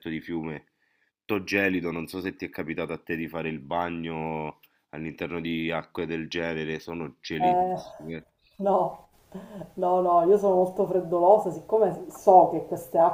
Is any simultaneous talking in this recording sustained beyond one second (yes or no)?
no